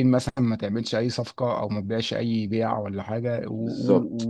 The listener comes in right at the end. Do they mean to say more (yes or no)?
no